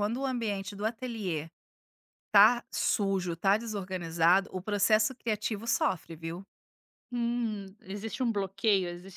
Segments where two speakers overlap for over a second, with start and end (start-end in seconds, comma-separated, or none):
none